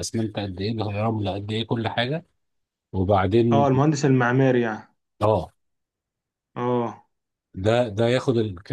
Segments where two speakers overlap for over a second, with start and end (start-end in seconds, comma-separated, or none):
none